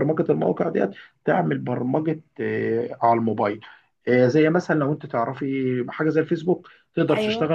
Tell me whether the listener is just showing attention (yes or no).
yes